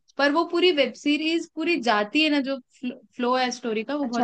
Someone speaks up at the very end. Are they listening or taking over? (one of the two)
taking over